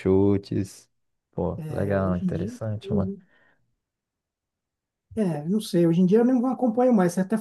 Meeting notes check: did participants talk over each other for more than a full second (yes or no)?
yes